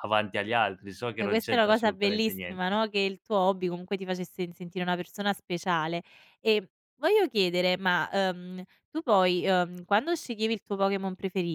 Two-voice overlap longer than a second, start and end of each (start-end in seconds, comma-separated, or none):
1.2-2.8